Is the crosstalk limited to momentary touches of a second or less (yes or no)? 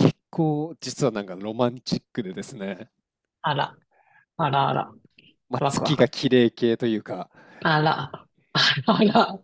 yes